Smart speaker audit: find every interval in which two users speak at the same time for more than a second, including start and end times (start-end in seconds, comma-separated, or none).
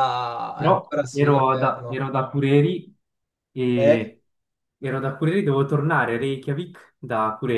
0.5-2.1